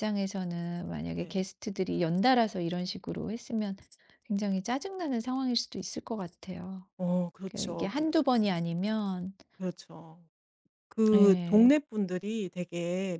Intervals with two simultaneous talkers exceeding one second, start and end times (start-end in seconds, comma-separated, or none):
none